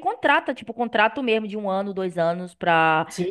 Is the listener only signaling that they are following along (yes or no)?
no